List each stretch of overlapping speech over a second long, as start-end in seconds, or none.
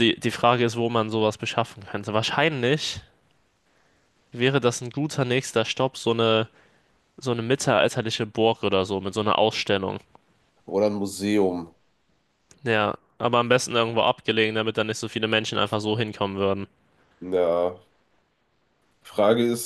none